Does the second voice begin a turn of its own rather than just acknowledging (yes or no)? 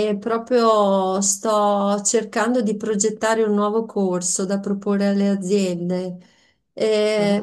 no